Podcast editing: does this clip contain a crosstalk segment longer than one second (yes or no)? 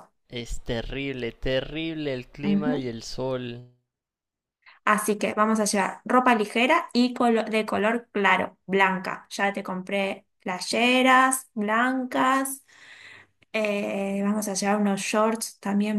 no